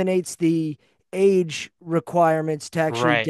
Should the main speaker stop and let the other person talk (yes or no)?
no